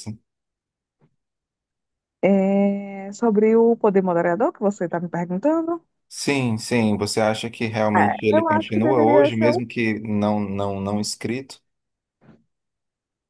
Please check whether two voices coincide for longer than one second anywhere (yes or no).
yes